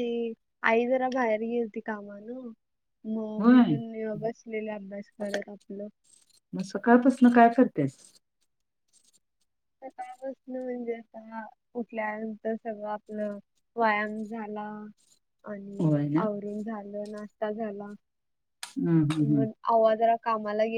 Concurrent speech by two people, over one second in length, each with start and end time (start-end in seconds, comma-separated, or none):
none